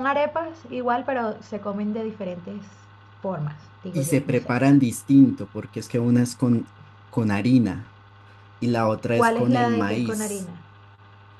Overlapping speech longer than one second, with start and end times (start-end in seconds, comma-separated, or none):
9.2-10.5